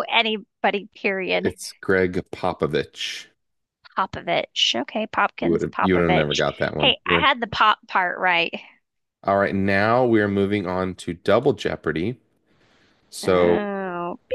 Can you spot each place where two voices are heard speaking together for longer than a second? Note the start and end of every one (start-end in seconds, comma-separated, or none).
5.4-7.3